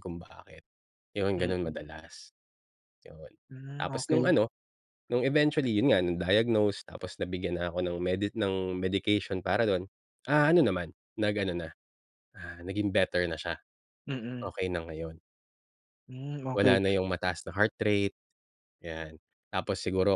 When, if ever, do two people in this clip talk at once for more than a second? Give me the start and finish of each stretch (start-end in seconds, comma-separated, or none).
none